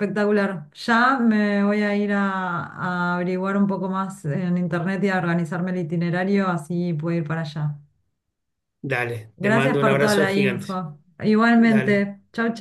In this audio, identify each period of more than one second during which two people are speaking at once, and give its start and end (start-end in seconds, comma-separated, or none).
9.4-10.8